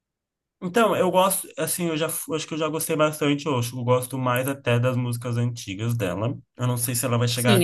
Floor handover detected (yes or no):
yes